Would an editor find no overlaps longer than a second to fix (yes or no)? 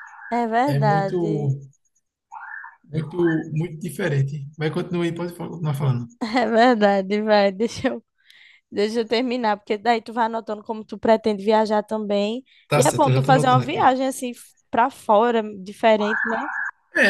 no